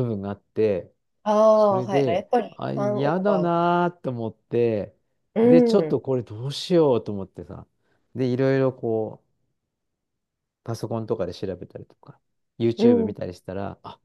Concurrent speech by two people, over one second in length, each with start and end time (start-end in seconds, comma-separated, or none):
1.5-3.5